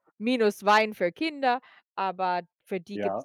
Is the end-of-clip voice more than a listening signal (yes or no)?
yes